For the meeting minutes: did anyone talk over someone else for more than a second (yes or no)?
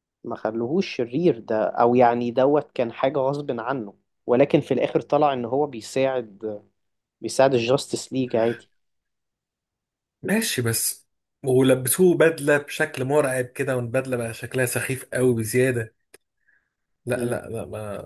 no